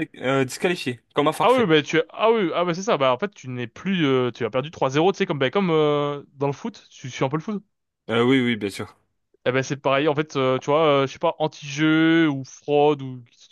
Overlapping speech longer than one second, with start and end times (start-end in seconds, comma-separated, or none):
none